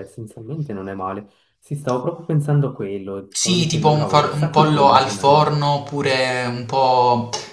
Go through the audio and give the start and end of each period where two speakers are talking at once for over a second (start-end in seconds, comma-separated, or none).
3.3-5.2